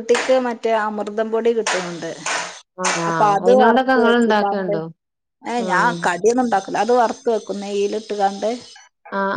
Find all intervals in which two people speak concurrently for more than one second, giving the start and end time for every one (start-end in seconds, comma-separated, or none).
3.1-4.7